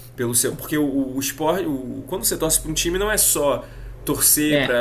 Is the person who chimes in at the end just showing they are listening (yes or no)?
yes